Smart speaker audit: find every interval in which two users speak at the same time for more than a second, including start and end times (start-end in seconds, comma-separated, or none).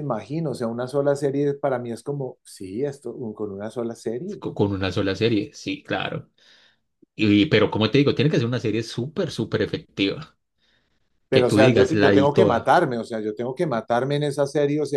11.3-12.8